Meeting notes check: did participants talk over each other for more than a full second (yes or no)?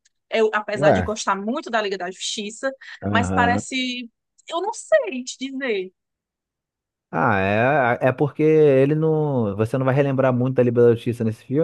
no